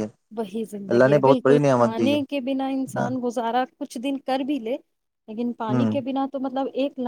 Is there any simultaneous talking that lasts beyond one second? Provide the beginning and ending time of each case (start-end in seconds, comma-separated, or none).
0.9-2.2